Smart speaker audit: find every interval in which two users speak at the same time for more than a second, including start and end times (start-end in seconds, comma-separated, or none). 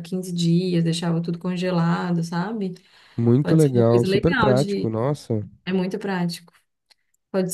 3.4-4.9